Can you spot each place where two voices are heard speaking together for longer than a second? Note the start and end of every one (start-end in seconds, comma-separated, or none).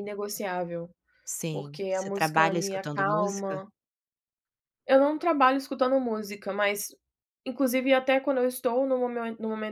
1.5-3.6